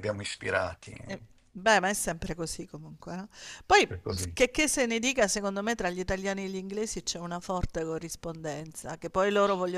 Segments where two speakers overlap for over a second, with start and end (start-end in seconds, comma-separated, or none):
none